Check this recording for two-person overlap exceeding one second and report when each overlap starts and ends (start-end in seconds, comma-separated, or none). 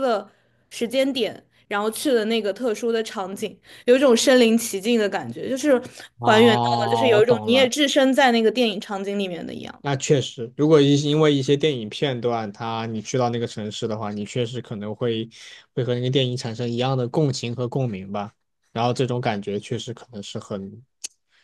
6.2-7.7